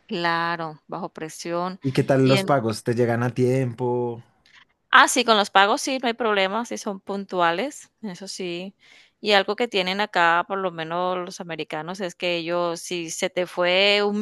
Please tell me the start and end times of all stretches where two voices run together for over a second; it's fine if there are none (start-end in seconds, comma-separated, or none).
none